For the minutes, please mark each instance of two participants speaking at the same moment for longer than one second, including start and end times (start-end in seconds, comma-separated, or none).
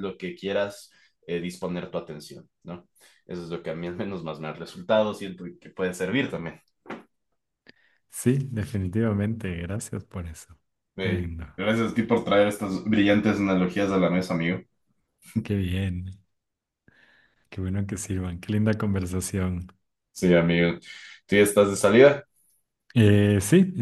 none